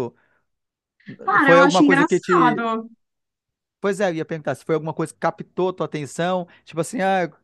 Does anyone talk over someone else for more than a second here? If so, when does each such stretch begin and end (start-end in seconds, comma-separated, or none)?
1.4-2.6